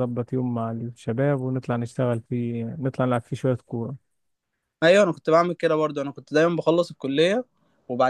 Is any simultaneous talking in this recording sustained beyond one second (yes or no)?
no